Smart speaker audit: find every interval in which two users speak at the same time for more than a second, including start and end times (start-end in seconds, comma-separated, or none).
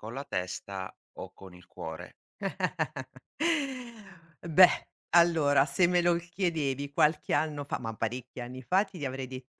none